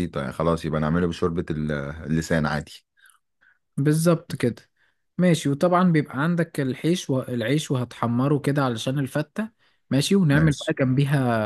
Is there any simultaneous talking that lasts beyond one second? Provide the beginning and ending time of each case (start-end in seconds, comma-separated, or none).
none